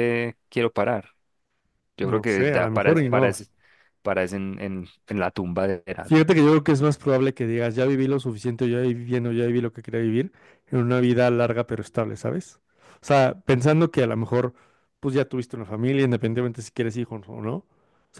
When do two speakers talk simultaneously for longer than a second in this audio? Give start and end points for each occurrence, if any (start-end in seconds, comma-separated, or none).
2.0-3.4